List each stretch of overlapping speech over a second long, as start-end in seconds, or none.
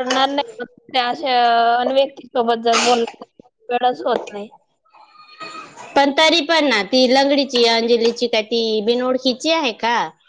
none